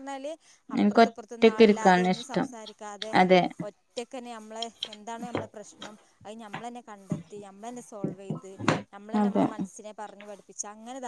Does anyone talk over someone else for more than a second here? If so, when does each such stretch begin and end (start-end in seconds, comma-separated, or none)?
0.8-2.5